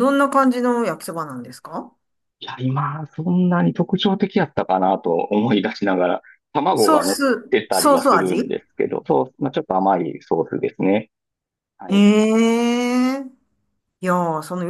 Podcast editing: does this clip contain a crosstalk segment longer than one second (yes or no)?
yes